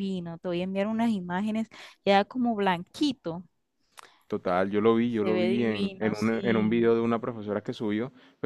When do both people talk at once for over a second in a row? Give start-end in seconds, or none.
5.0-6.9